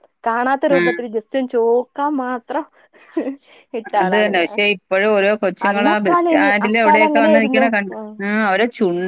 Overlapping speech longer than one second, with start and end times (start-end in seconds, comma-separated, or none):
5.7-7.7